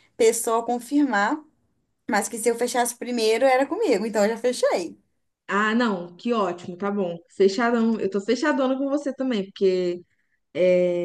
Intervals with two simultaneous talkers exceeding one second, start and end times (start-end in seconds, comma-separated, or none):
none